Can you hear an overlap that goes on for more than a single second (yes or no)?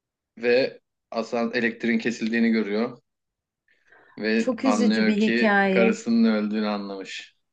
yes